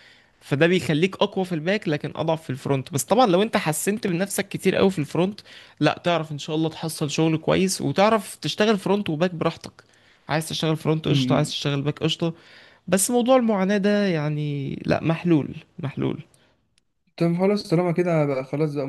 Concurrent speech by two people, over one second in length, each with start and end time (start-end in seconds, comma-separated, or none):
none